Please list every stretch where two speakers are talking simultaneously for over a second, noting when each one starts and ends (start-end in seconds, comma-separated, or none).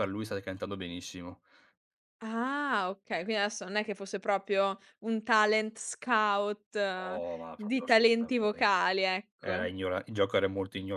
7.0-8.6